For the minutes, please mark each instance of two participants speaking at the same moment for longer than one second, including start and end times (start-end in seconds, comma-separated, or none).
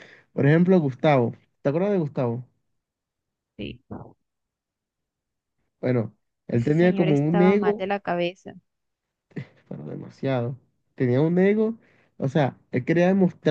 6.5-7.9